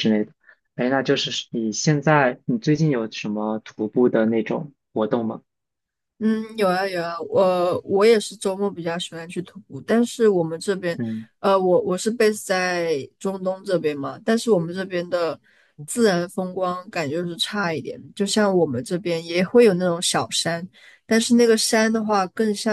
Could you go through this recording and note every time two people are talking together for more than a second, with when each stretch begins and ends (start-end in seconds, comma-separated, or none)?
none